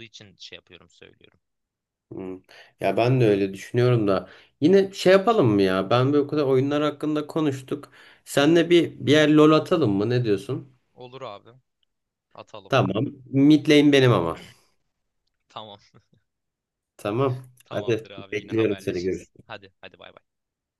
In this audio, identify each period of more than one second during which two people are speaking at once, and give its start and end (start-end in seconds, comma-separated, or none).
17.6-19.5